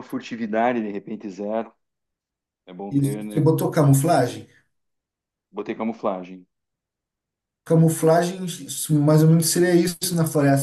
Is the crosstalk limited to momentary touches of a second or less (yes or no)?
yes